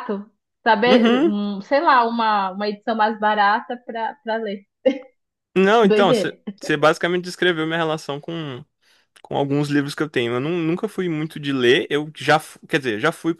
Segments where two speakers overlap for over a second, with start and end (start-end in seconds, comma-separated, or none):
none